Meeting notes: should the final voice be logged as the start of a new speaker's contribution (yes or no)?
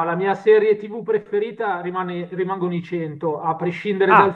no